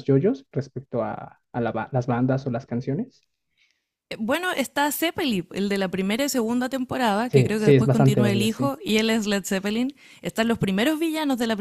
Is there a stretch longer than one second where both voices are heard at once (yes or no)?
yes